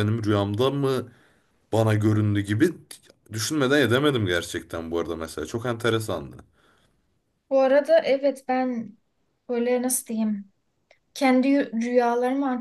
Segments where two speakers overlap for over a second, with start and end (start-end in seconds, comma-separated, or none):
none